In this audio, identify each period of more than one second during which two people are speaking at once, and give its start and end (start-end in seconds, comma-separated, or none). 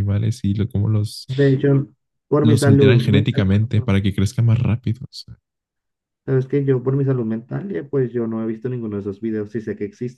2.4-4.0